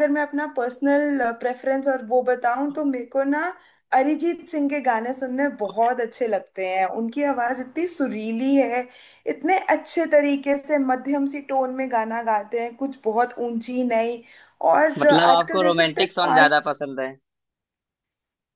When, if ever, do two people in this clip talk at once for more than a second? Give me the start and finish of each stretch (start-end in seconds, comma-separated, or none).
15.0-16.7